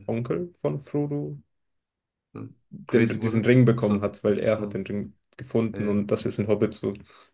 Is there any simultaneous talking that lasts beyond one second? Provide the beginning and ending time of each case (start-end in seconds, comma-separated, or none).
2.9-4.8